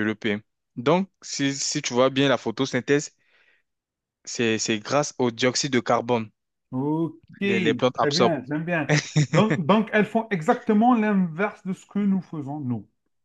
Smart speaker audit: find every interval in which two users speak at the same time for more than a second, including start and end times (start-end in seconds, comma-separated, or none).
none